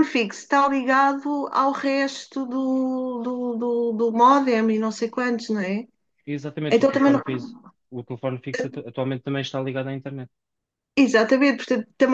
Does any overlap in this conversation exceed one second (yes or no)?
no